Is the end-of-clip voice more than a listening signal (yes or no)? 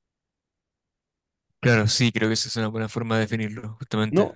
yes